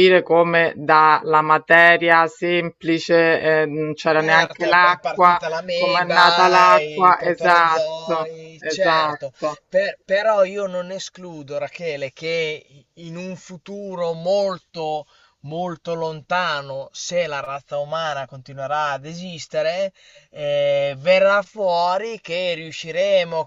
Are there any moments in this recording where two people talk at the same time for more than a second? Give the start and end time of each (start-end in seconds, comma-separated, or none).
4.2-9.3